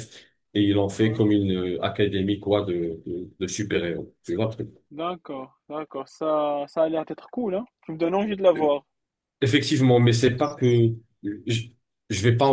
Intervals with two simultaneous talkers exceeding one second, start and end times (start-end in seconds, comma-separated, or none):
none